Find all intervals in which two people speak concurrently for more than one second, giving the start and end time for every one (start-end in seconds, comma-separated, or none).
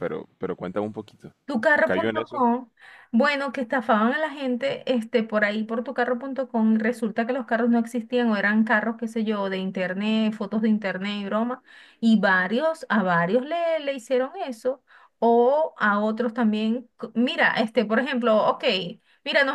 none